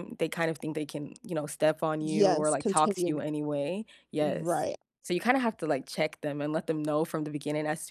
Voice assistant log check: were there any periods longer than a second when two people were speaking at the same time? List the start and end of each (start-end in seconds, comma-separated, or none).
2.0-3.2